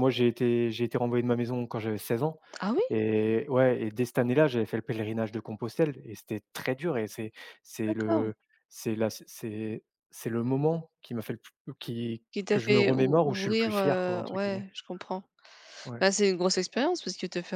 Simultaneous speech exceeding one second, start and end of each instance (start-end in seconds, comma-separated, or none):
12.3-14.7